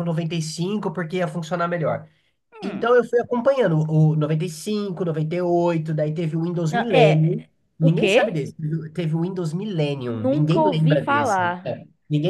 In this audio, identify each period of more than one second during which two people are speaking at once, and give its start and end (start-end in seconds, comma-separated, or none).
6.7-8.4, 10.1-11.8